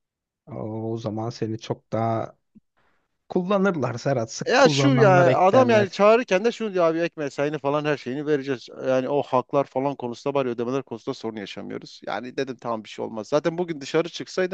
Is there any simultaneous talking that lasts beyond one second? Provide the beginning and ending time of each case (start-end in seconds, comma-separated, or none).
4.5-6.0